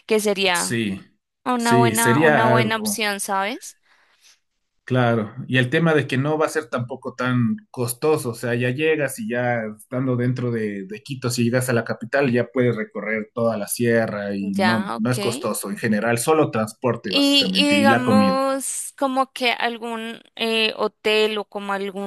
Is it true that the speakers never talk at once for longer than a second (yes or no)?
no